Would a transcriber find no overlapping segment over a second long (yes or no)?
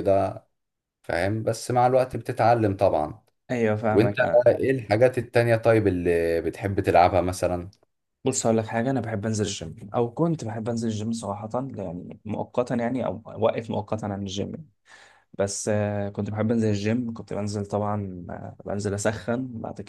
yes